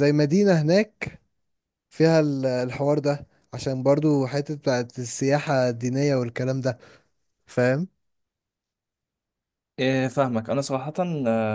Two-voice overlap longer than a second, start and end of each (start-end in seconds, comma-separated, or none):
none